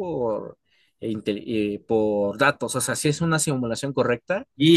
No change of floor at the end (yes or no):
no